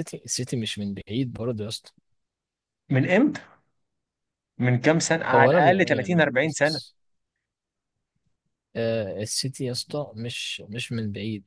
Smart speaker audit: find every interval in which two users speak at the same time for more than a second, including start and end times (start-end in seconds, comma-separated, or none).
5.3-6.8